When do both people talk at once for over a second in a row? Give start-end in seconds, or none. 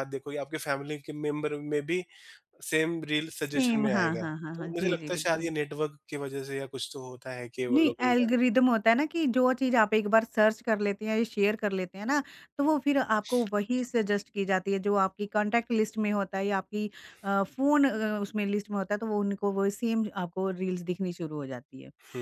3.5-5.5